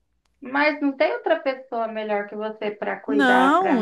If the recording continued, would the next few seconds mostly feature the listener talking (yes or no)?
yes